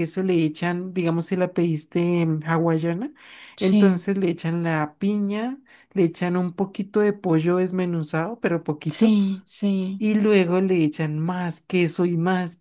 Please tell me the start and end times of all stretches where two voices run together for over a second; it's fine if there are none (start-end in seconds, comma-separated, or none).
none